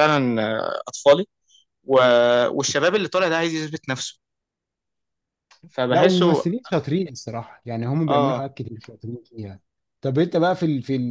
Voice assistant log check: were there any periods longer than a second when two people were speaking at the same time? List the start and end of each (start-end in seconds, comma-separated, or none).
none